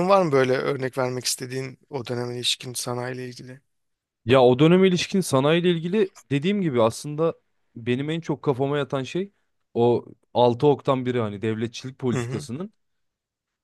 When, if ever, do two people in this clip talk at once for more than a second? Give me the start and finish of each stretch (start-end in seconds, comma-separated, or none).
none